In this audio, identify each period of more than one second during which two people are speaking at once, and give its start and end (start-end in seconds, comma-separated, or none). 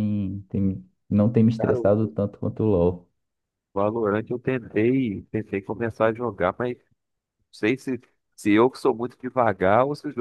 none